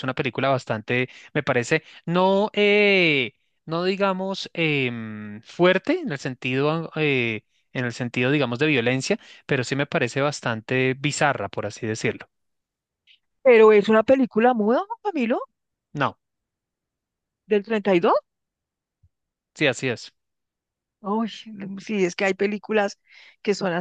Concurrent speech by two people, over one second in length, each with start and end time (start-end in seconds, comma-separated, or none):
none